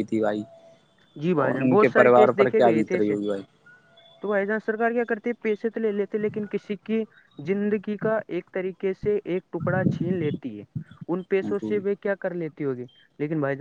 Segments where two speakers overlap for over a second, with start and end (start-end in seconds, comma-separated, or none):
1.4-3.1